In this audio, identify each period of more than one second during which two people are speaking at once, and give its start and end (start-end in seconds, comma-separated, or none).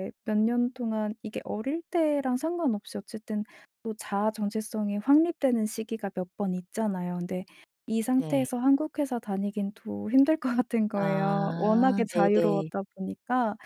10.9-12.7